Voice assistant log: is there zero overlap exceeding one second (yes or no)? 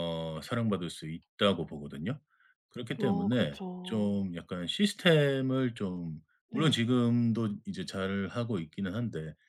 no